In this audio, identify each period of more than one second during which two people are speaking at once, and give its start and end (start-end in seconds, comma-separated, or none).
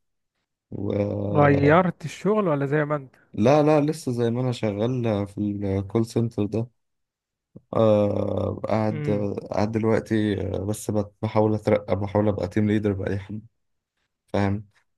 none